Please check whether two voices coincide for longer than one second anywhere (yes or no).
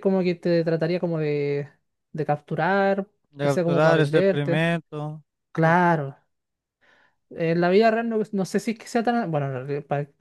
yes